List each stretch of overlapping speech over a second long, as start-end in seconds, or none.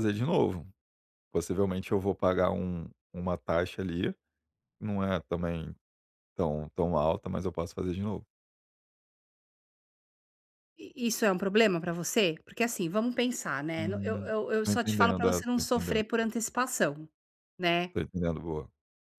13.8-16.0